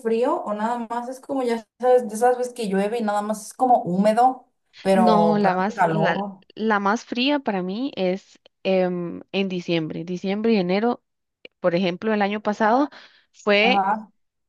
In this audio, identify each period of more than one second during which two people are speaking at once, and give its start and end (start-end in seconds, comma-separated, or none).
4.9-6.4